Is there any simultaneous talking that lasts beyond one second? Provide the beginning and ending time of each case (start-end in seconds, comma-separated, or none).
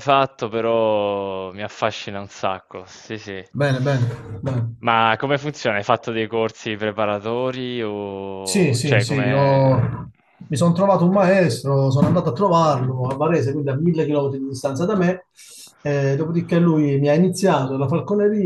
8.4-9.8